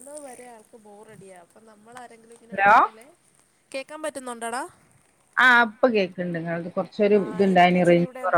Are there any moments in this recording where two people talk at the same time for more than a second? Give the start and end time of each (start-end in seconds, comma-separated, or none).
none